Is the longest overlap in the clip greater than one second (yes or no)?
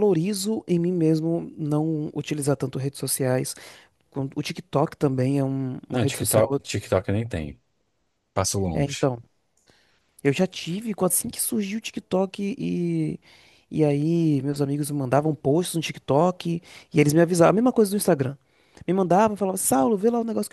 no